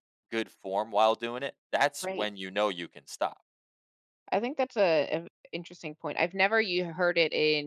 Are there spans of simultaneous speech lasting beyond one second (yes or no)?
no